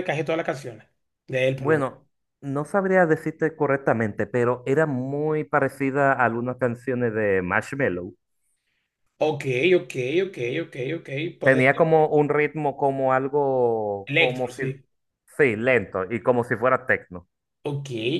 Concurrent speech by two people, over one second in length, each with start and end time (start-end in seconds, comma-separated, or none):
none